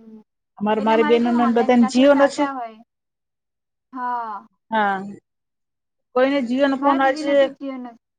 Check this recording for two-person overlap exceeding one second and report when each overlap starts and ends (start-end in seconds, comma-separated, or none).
0.8-2.4